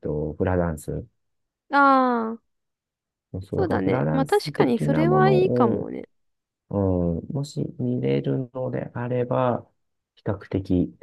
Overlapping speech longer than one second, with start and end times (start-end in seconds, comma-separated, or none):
3.6-5.9